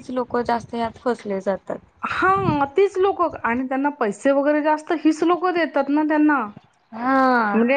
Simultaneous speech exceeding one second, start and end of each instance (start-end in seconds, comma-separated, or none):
none